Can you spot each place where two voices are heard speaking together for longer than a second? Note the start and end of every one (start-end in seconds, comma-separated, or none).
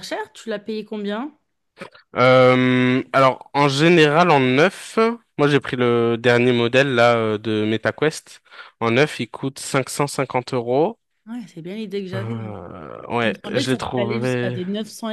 13.2-14.6